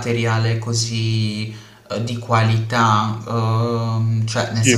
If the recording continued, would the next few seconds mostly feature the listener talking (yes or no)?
no